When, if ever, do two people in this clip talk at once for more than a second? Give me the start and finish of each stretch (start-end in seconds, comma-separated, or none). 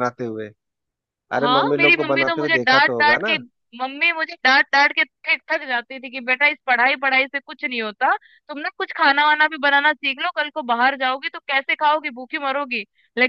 1.4-3.4